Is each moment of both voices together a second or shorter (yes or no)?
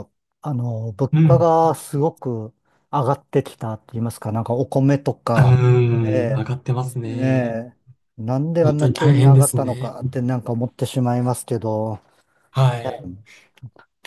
no